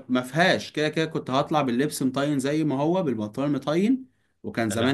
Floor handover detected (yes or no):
no